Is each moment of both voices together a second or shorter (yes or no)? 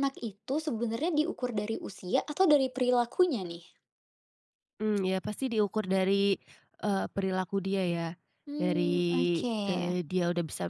no